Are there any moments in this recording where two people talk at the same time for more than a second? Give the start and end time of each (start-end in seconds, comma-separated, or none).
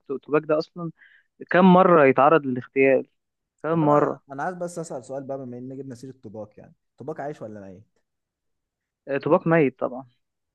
none